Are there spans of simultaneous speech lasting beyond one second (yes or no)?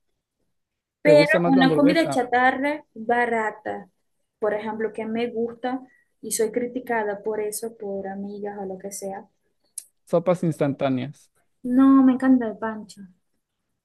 yes